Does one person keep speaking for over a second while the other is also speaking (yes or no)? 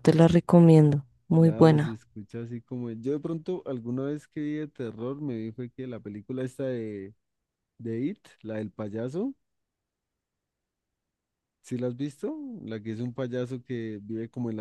no